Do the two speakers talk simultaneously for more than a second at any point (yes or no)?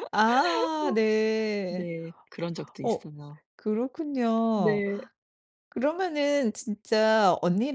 no